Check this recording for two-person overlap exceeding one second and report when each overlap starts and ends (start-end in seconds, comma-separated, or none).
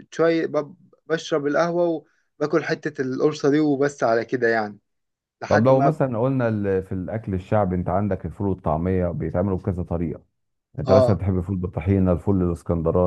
none